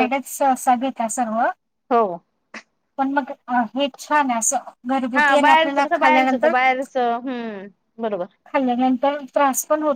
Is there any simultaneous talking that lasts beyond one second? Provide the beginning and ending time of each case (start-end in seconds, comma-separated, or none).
5.2-6.5